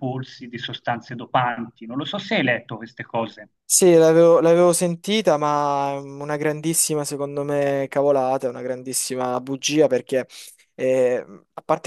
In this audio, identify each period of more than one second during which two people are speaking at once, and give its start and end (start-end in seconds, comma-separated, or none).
none